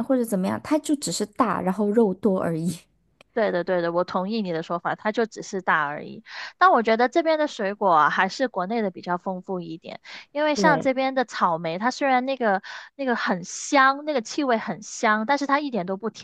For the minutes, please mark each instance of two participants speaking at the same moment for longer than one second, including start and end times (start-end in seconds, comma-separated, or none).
none